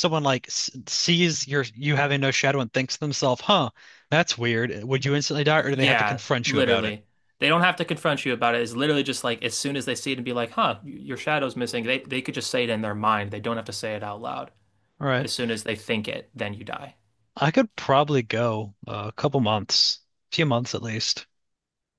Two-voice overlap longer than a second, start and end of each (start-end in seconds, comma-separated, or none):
5.6-7.0